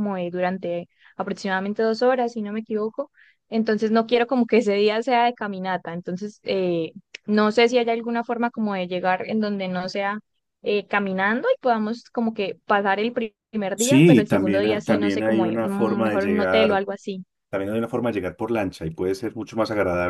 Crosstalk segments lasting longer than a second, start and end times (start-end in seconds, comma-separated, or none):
13.8-16.8